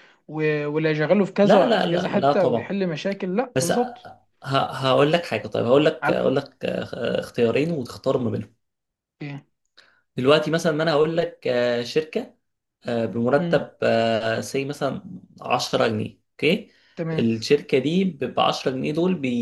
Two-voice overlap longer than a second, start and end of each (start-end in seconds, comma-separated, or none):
1.4-2.8